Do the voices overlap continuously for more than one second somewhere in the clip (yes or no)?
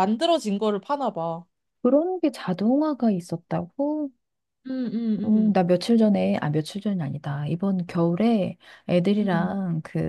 no